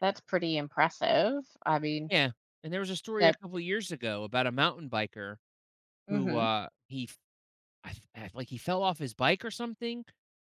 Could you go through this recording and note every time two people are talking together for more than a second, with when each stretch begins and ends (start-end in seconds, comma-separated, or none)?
none